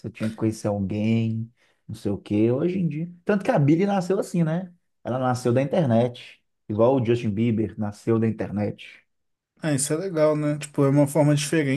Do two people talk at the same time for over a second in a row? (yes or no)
no